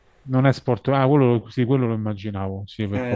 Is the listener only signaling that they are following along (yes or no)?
no